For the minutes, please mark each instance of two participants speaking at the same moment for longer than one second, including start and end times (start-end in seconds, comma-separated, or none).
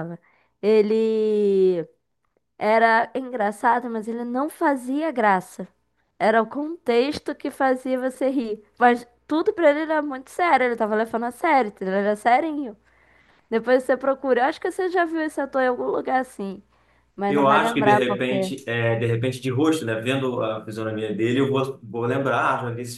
17.3-18.5